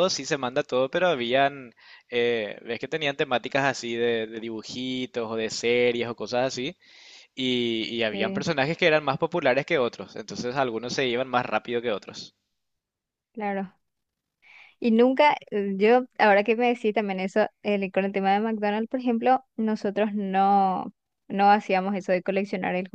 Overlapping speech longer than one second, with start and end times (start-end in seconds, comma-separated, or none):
none